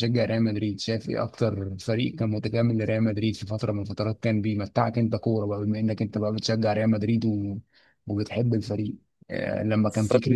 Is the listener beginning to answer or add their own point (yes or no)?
no